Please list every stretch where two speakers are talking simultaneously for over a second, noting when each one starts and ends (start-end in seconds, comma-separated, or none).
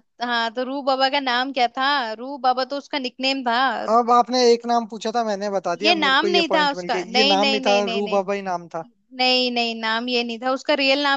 5.8-8.2